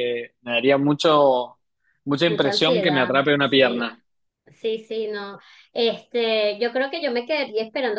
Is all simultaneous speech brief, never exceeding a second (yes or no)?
no